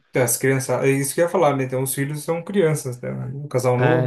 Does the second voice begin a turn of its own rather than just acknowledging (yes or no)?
yes